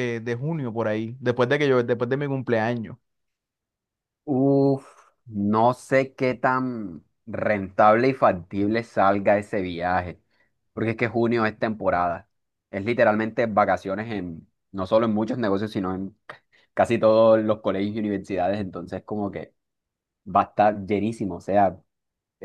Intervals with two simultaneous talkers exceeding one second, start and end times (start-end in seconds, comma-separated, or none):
none